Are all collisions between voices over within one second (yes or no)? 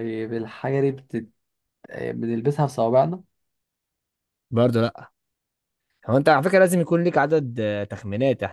yes